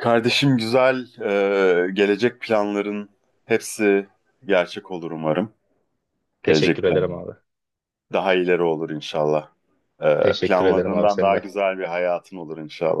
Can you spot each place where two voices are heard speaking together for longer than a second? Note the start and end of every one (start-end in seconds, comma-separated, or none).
10.2-11.5